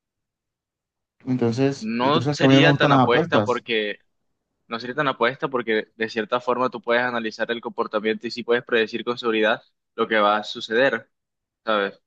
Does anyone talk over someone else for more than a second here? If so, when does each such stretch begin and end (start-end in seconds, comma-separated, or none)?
1.8-3.6